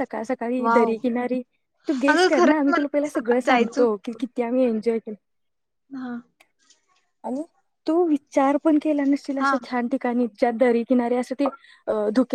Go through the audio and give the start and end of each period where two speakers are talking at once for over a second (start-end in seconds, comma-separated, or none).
2.1-3.8